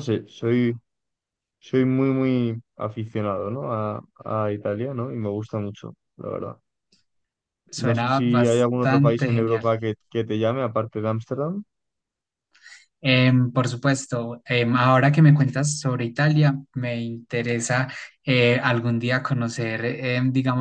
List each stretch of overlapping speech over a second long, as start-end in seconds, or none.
7.9-9.7